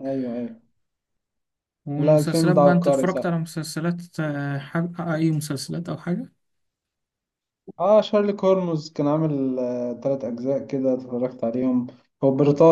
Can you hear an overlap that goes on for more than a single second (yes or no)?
yes